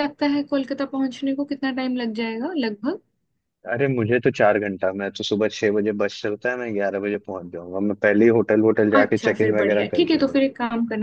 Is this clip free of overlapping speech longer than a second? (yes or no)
no